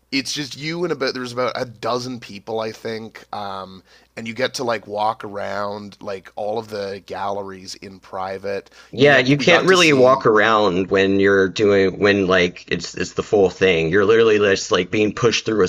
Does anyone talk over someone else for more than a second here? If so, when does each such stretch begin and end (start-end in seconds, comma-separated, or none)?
8.9-10.3